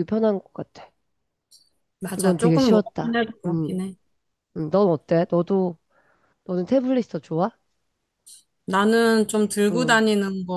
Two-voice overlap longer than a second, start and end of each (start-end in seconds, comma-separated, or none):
2.1-3.8